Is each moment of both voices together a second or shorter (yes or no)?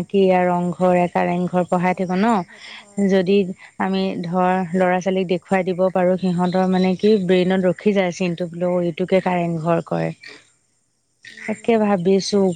no